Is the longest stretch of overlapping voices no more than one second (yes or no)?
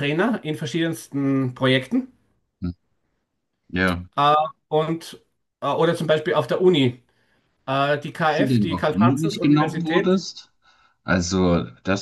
no